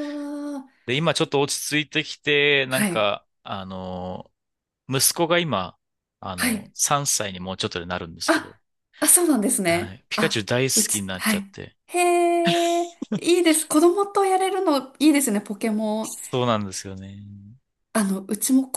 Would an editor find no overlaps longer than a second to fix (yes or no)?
no